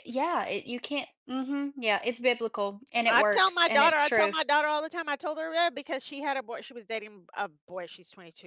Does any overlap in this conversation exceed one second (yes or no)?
yes